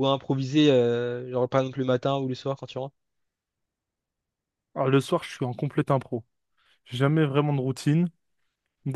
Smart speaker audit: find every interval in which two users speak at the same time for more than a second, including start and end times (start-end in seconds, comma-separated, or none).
none